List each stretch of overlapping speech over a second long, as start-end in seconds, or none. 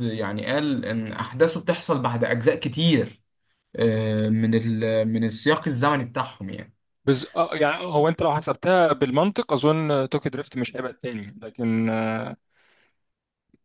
none